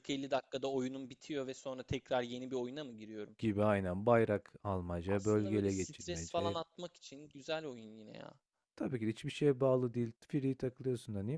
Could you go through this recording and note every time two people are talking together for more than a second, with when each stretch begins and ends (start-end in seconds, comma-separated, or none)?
5.1-6.6